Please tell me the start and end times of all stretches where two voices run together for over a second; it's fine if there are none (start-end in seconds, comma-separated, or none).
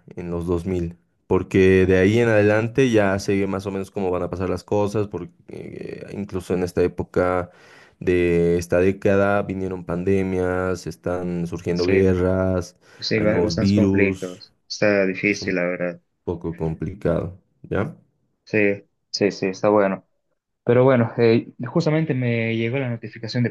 13.1-14.4